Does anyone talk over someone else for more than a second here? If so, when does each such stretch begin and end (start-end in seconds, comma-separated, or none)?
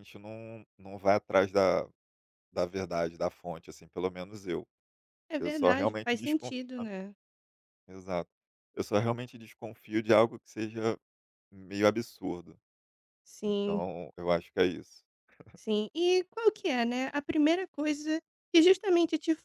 5.4-6.9